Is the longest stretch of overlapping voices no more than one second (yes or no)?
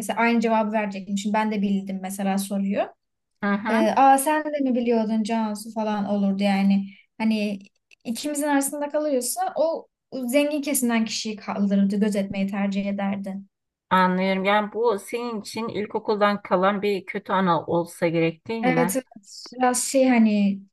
yes